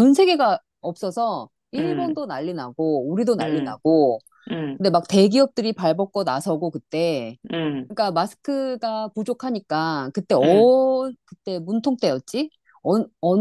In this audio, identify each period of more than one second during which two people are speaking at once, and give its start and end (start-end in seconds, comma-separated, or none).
none